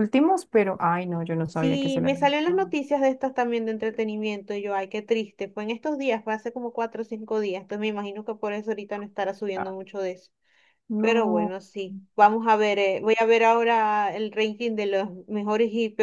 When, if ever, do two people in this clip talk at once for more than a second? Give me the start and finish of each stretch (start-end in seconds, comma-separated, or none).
1.5-2.7